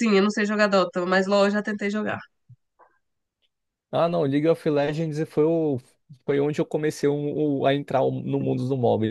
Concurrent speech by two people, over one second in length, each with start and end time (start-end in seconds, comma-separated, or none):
none